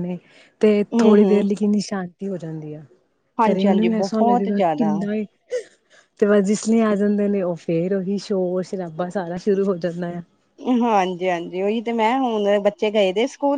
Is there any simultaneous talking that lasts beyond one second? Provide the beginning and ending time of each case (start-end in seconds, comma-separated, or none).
3.5-4.9